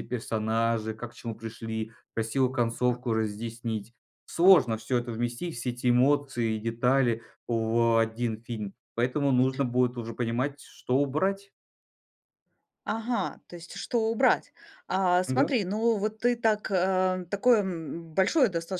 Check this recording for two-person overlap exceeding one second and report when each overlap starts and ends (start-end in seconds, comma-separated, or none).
none